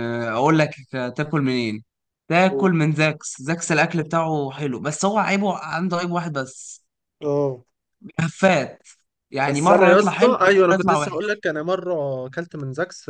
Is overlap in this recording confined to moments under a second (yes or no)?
no